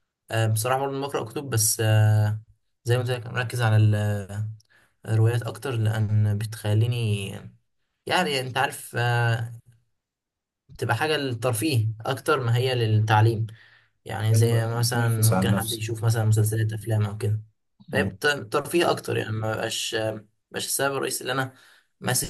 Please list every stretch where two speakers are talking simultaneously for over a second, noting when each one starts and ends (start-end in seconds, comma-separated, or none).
14.3-16.0